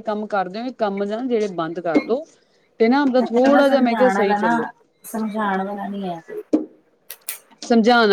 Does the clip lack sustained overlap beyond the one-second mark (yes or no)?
no